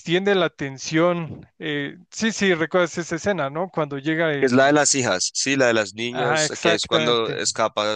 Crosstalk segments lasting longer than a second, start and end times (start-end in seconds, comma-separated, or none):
6.1-7.4